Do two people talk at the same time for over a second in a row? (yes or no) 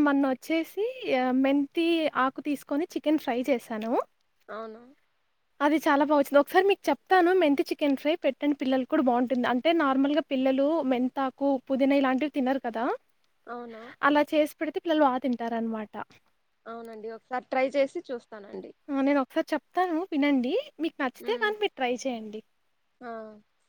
no